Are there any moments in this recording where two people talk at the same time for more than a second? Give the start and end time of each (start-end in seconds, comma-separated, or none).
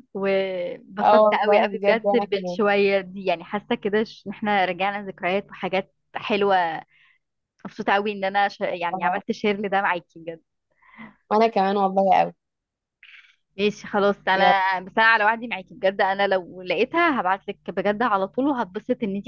1.0-2.6